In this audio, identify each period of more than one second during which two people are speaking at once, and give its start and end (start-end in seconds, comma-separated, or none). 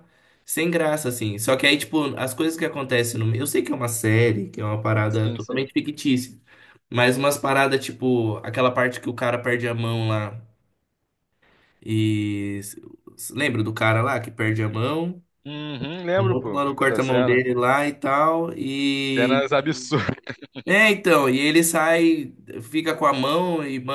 16.2-17.4